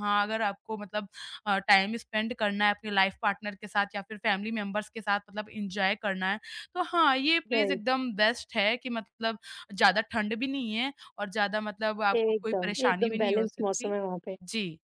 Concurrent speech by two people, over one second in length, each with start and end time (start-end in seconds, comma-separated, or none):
12.2-13.9